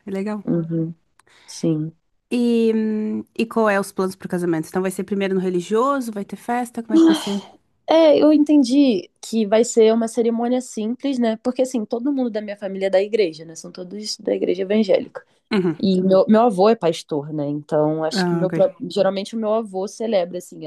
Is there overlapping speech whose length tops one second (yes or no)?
no